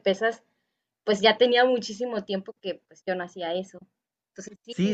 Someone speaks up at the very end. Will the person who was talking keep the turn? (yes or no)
no